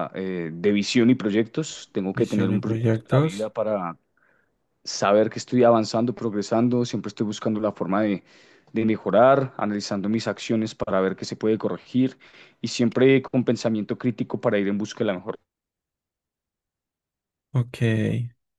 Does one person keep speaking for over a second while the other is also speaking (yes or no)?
yes